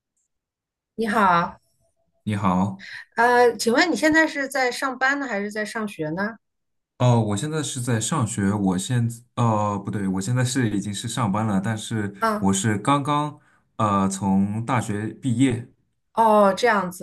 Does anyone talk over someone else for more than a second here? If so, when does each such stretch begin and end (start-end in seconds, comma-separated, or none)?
none